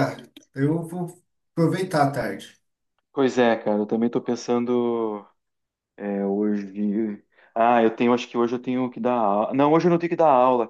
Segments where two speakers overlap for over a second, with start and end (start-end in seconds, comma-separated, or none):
none